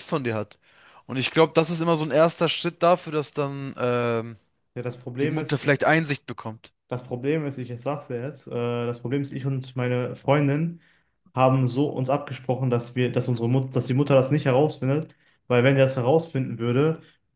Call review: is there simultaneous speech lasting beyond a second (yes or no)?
no